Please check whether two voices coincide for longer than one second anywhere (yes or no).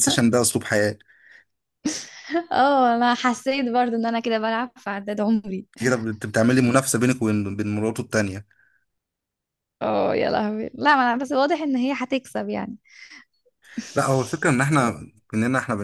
no